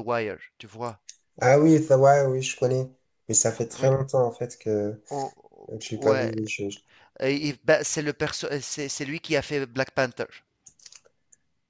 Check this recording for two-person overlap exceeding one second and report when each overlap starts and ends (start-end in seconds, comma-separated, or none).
none